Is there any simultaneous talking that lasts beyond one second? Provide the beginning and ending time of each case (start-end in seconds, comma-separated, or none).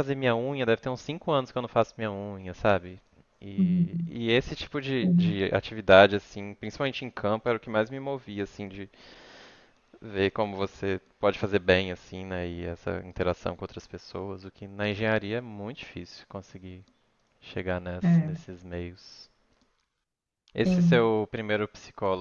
none